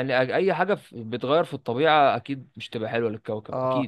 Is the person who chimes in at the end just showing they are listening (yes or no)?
no